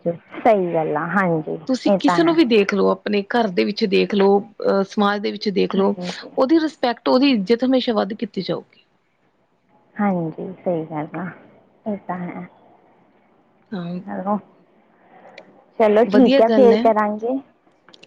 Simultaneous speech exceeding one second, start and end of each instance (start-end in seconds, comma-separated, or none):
none